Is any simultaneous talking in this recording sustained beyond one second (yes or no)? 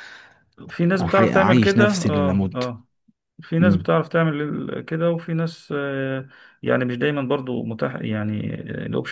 yes